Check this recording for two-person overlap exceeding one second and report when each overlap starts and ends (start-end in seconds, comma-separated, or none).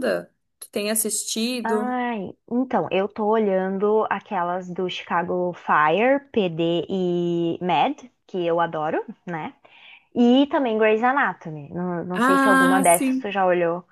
12.1-13.3